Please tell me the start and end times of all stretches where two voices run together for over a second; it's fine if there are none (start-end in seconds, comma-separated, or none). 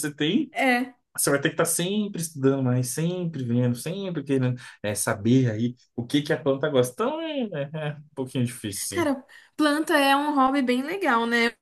none